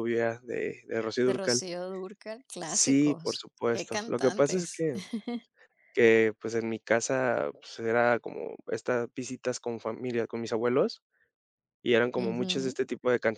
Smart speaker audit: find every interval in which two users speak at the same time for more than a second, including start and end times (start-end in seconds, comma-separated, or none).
2.6-4.8